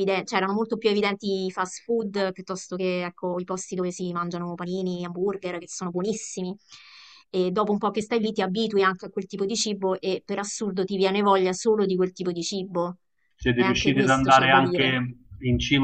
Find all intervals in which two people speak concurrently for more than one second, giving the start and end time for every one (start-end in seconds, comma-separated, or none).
13.6-15.0